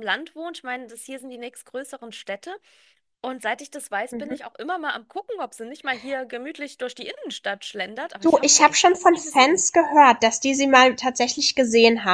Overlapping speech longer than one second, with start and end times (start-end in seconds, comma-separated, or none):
8.2-9.7